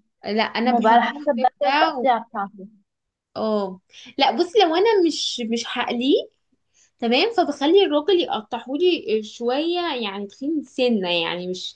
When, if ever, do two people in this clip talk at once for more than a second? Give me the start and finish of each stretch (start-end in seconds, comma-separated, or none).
0.7-2.0